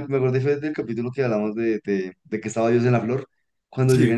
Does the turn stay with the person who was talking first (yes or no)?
yes